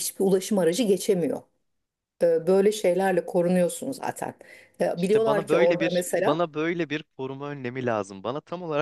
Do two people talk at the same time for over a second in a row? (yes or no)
yes